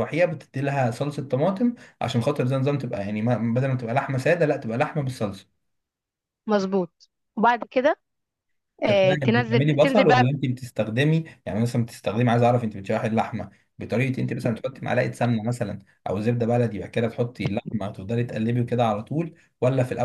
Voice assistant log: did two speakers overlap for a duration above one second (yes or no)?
yes